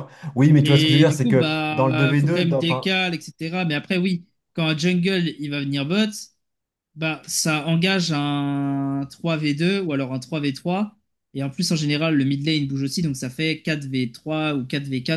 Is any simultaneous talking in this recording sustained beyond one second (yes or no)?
yes